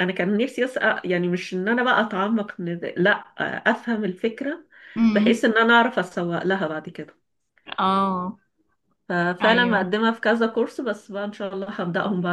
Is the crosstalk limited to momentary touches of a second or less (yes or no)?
yes